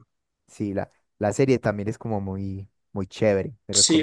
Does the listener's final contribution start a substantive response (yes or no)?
yes